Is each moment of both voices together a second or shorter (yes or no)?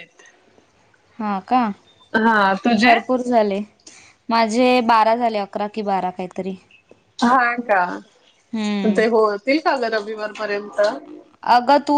yes